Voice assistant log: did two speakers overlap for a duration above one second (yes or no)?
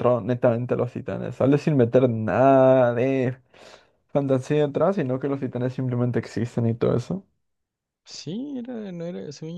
no